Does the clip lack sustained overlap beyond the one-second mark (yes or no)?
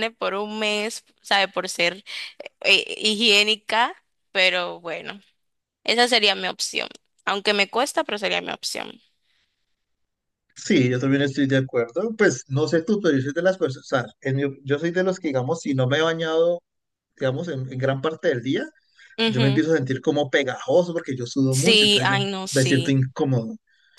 no